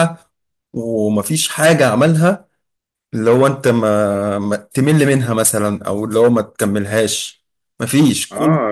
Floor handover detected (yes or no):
yes